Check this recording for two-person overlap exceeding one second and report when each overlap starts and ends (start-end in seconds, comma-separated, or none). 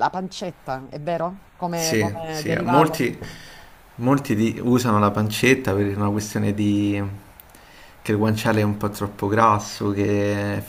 1.7-3.1